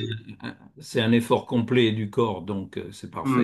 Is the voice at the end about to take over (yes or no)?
yes